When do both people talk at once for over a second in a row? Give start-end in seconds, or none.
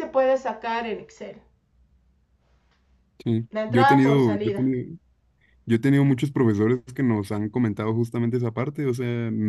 3.5-4.7